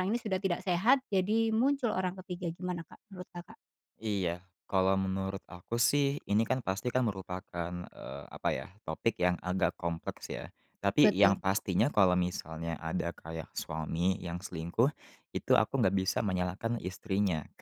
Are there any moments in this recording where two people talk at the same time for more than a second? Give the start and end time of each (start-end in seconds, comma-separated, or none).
none